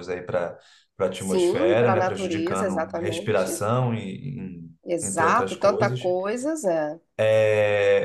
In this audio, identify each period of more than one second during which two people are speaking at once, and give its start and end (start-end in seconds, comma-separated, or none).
1.1-3.6, 4.8-6.1